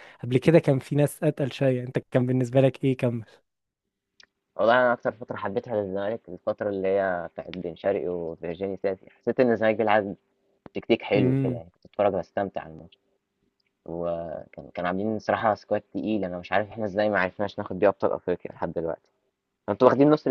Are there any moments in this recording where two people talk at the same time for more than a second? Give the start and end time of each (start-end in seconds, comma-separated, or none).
none